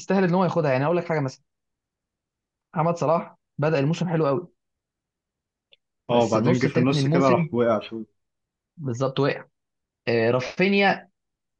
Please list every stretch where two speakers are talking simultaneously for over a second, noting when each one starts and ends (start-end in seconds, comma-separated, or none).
6.1-7.5